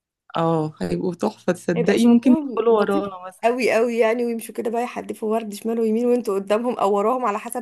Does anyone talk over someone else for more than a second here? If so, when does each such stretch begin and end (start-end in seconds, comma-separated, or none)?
1.8-3.6